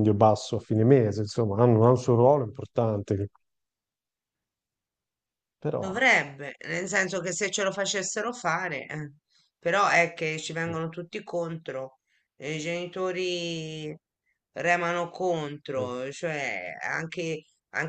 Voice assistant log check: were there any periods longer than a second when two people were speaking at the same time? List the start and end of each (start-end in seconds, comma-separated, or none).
none